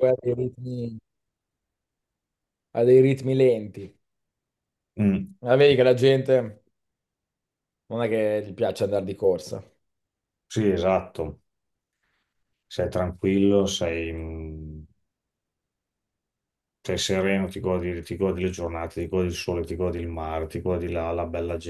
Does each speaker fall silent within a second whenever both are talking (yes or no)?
yes